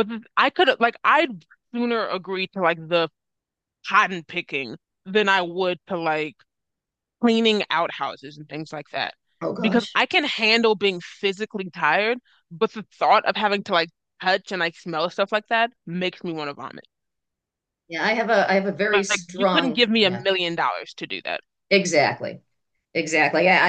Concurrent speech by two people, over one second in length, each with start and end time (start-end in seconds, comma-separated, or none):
18.9-20.2